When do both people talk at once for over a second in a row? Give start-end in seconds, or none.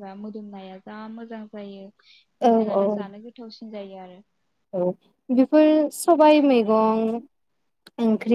none